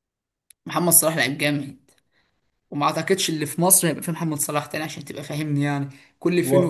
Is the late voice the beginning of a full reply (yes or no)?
yes